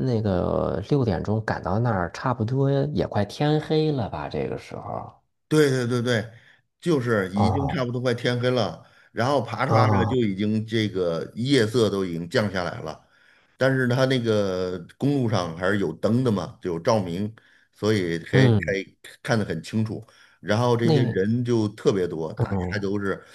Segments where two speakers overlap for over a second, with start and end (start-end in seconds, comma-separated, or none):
none